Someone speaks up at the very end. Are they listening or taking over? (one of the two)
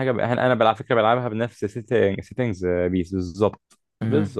listening